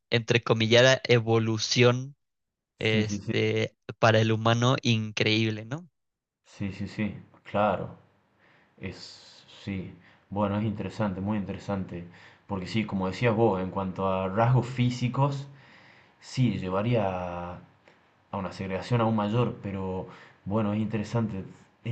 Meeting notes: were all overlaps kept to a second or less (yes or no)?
yes